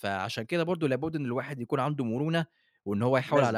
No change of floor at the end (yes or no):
yes